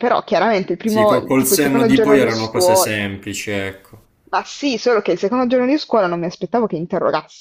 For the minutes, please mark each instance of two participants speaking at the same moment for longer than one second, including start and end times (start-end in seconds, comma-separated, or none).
0.8-2.9